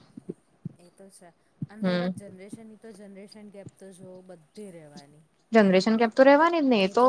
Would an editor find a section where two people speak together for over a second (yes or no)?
no